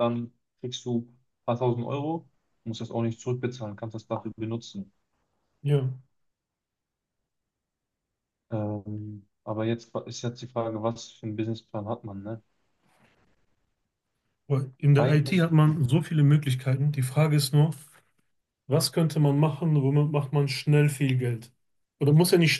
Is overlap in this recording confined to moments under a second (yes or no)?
yes